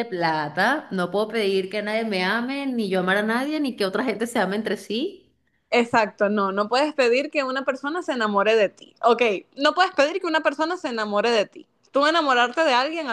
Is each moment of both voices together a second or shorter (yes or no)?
yes